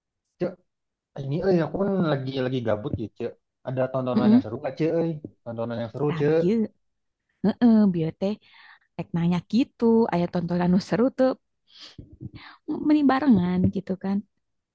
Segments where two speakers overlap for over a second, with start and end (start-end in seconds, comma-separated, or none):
none